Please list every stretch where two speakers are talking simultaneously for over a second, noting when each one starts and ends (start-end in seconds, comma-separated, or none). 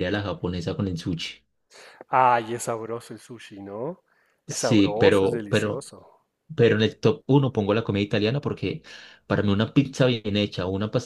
4.5-5.9